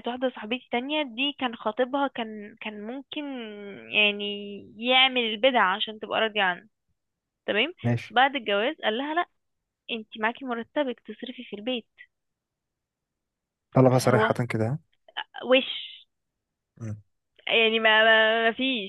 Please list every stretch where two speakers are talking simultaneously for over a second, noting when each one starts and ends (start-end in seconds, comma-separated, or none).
none